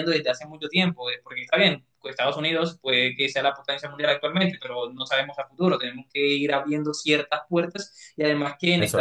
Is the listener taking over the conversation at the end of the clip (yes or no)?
no